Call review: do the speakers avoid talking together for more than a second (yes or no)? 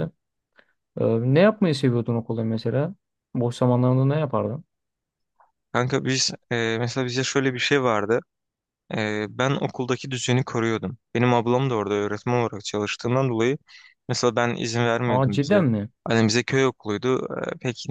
yes